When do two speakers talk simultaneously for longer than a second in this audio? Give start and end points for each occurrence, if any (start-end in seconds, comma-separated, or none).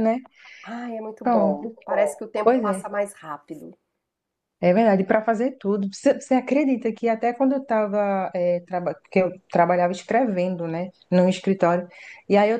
1.2-2.9